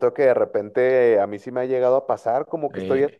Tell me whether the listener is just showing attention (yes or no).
yes